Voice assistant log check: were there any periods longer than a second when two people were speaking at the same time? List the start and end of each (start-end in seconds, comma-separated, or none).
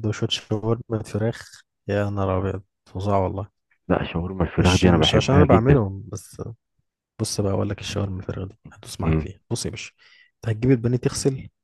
4.6-5.8